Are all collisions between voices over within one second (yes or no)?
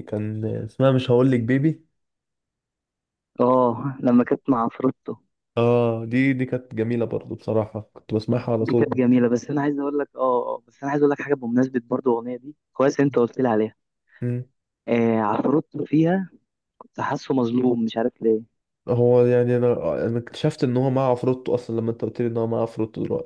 yes